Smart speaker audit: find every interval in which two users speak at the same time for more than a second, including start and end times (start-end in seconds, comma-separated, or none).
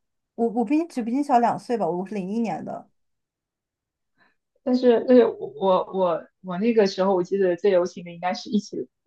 none